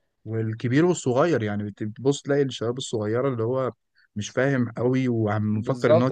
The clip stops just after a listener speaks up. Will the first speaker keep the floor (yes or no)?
no